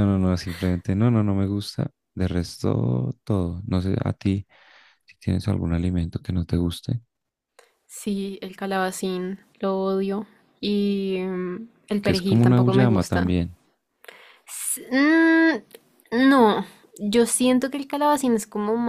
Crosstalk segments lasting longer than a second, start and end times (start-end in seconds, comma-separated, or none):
12.0-13.4